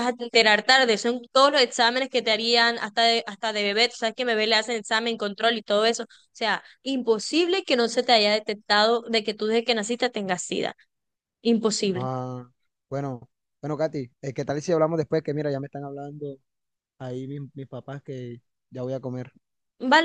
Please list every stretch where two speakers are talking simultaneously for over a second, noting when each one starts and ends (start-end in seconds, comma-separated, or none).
none